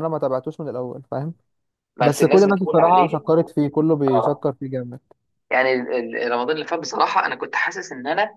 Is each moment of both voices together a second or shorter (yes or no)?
no